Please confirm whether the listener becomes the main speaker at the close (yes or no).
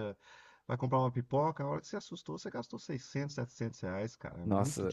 yes